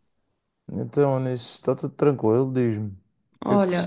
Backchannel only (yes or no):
no